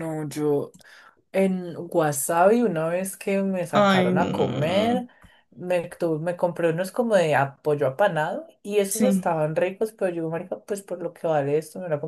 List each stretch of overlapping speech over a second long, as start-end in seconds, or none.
3.7-5.0